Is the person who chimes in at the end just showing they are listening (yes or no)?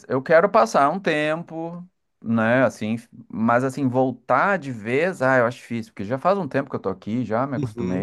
no